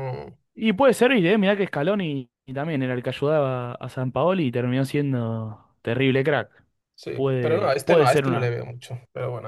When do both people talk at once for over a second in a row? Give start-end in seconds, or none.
7.1-8.6